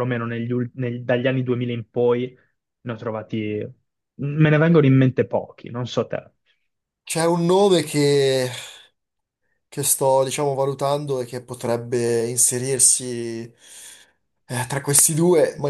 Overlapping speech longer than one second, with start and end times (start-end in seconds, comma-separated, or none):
none